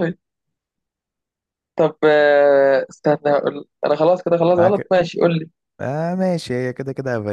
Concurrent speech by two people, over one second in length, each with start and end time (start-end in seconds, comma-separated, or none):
none